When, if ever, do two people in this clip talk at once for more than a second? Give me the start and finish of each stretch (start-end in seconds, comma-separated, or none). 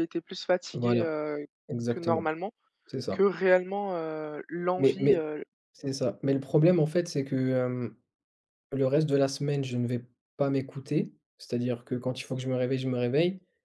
none